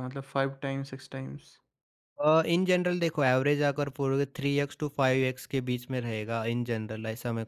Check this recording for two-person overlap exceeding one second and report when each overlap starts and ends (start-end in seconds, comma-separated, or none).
none